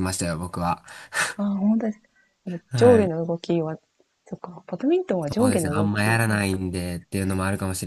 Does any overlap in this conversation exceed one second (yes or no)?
yes